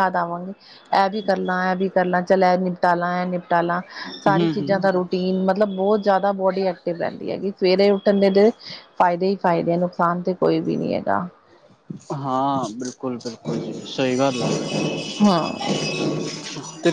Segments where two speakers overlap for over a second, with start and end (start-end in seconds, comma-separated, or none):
none